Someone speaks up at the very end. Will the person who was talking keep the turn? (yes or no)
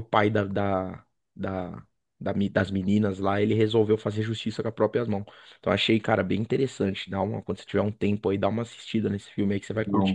no